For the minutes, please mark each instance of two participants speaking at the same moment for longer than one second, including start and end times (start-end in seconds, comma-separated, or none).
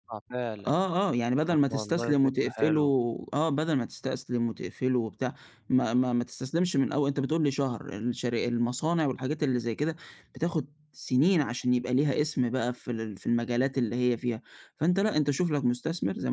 1.5-2.8